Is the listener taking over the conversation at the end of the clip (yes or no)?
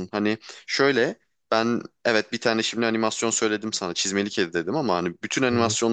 no